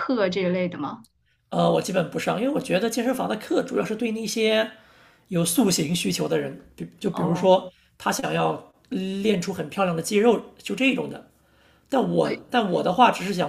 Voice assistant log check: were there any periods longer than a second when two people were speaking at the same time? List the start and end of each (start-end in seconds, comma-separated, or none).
none